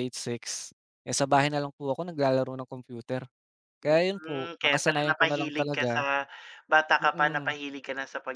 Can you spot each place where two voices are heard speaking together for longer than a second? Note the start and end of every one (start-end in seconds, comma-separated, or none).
3.8-5.9